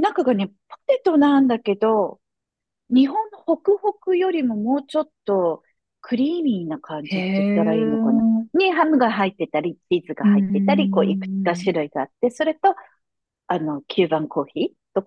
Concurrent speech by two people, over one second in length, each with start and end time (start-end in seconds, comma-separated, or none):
7.0-8.6, 10.2-11.7